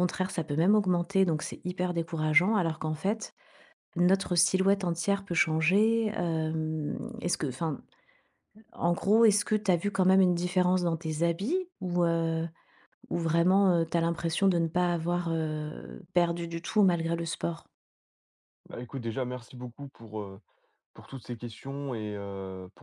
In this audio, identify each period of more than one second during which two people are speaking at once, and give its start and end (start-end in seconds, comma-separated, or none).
none